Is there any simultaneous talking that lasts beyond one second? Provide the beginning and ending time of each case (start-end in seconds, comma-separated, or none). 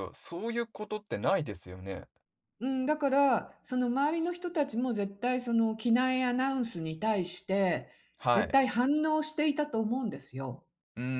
none